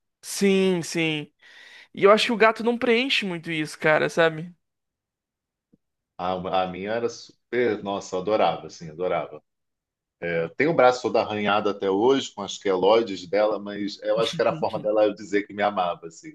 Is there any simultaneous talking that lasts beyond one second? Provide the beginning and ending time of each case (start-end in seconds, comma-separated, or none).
none